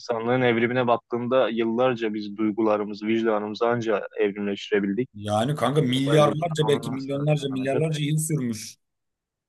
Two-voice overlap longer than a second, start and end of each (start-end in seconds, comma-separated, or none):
5.9-7.8